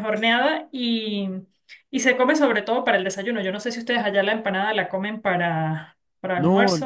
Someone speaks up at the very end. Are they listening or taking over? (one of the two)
taking over